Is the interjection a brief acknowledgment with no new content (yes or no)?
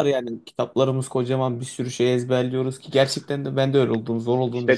no